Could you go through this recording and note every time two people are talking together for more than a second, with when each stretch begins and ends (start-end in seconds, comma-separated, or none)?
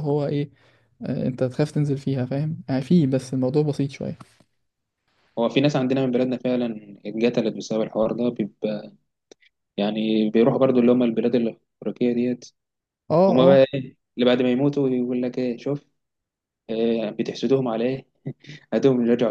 none